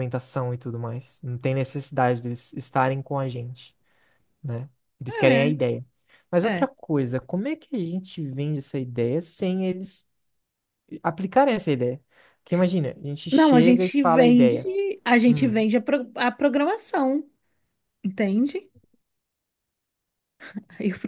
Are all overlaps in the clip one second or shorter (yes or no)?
no